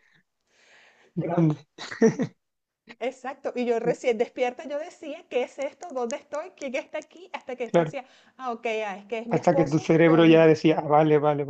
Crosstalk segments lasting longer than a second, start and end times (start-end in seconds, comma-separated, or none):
9.3-10.5